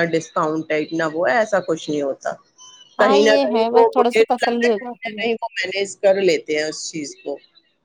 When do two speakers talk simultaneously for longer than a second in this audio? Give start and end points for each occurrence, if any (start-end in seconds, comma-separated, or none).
3.0-5.2